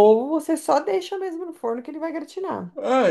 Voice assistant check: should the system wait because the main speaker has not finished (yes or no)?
no